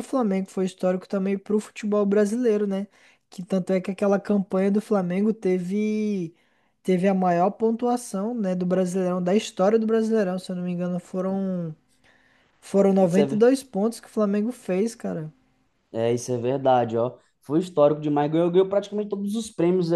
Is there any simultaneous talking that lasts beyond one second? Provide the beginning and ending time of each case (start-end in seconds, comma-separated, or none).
none